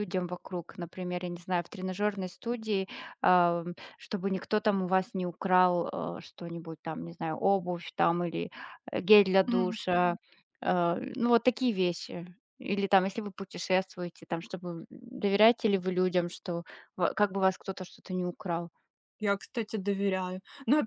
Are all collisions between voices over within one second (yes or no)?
yes